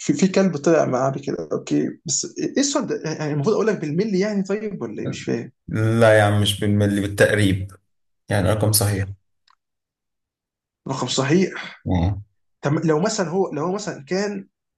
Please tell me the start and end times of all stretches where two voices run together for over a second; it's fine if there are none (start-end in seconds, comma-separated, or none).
none